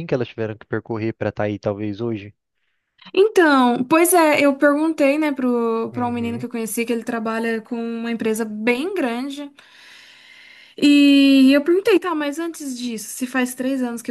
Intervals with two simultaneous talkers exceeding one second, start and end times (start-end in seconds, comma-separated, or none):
none